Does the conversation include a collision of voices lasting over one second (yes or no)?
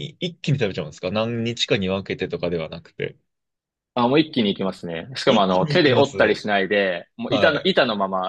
yes